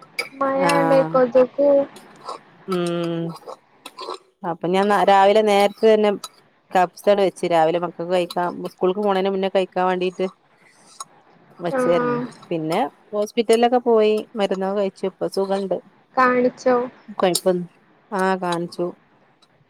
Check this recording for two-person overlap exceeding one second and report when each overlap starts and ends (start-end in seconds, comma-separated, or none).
none